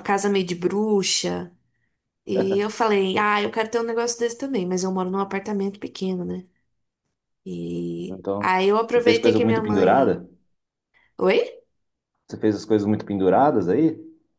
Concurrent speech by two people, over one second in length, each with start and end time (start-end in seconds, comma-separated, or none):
8.1-10.2